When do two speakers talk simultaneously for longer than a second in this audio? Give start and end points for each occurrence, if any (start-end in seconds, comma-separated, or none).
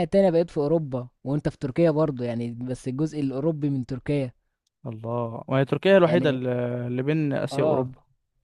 none